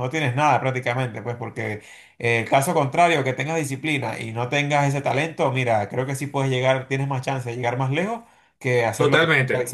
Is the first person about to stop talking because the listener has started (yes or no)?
yes